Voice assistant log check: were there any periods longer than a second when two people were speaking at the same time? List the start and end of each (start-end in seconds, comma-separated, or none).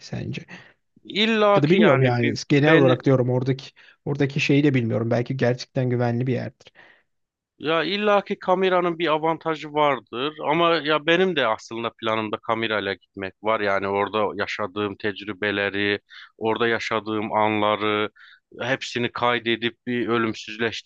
1.6-3.1